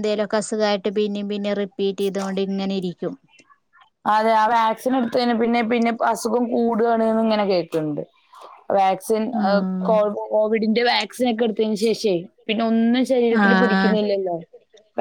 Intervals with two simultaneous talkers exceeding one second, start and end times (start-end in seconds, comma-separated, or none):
none